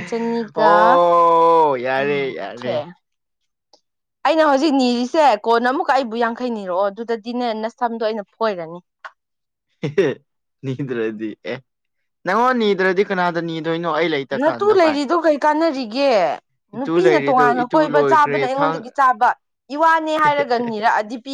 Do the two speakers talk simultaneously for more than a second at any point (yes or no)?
yes